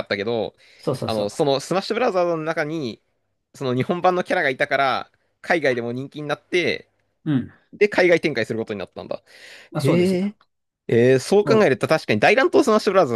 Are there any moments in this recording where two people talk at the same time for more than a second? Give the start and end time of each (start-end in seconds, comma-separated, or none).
none